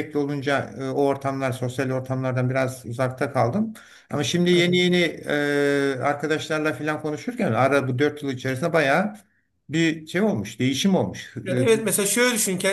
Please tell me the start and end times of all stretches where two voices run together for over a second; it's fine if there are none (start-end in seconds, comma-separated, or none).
none